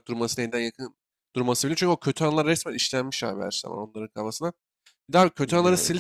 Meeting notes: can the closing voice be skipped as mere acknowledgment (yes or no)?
yes